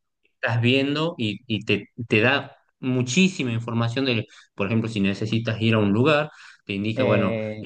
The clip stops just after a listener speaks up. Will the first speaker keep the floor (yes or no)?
yes